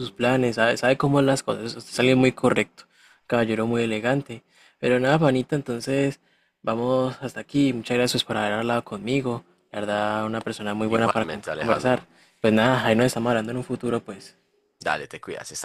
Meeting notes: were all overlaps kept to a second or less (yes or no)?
no